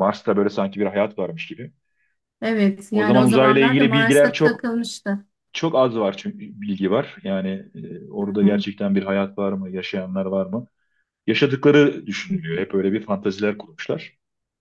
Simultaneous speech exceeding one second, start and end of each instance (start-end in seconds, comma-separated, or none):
2.9-4.7